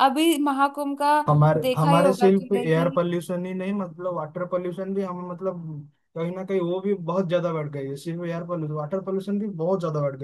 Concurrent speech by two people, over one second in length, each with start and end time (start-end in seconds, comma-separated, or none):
1.6-3.0